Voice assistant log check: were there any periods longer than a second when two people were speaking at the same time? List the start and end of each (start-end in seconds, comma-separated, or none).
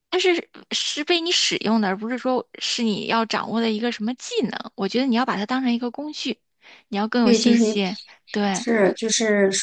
none